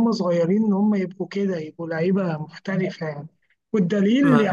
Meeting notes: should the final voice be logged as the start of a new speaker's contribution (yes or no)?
no